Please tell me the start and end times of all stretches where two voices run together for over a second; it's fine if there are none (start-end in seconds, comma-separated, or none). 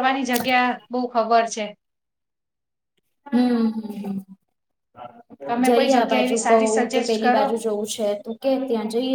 5.7-7.5